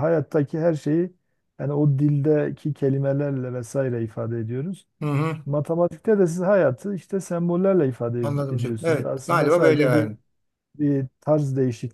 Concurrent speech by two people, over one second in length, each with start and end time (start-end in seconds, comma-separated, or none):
8.2-10.1